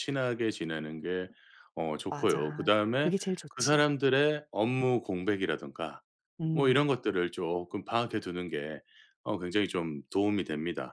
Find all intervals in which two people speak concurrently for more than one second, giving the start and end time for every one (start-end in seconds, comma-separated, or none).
2.1-3.9